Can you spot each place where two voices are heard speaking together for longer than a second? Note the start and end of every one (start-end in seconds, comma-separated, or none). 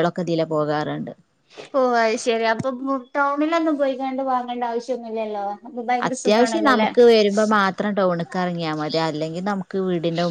none